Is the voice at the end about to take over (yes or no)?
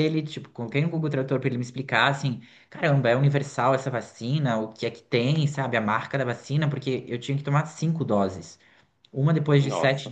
no